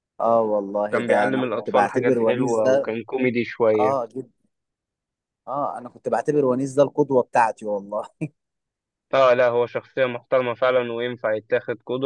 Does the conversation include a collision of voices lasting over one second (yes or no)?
yes